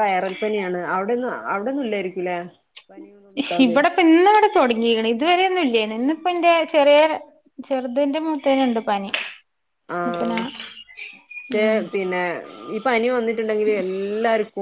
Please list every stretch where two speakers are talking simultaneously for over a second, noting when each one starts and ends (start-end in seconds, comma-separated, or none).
none